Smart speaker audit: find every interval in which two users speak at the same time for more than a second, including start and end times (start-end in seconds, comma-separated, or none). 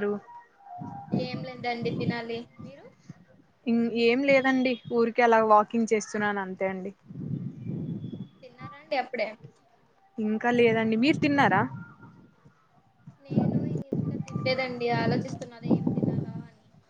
none